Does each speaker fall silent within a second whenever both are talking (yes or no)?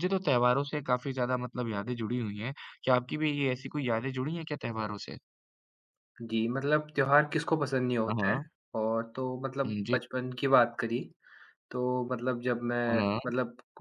yes